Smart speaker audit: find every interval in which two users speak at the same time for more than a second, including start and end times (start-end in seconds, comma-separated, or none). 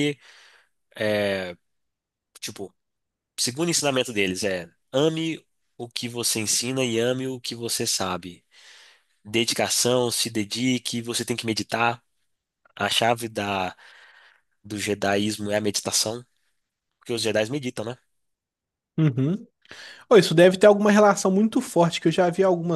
none